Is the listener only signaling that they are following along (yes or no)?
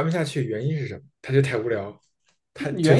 no